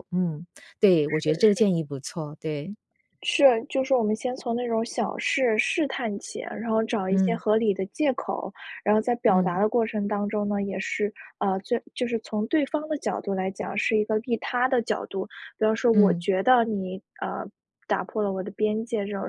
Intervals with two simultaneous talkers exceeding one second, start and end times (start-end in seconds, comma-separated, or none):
none